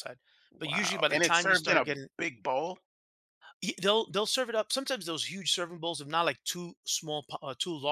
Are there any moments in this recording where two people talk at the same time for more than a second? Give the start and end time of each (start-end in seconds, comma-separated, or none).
0.6-2.1